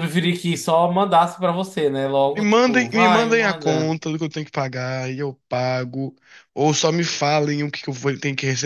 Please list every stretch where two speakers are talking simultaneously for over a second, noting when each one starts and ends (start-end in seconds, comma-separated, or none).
2.3-3.9